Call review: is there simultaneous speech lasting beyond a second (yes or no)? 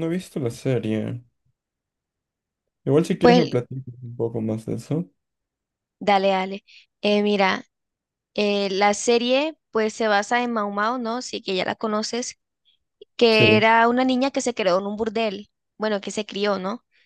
no